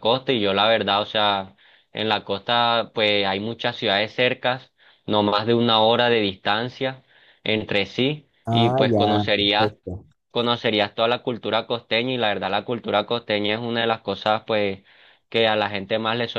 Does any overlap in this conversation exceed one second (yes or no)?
yes